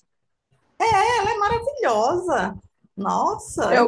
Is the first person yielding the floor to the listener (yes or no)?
yes